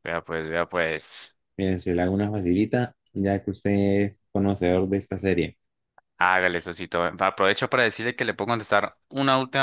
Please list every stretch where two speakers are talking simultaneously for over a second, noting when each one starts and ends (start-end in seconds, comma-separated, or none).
none